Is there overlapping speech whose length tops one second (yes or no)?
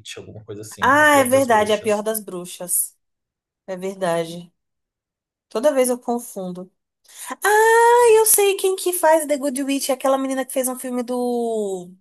yes